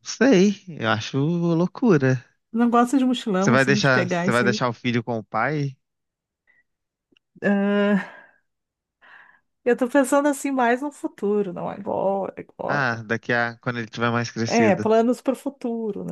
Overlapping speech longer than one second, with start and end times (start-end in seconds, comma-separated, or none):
3.4-4.6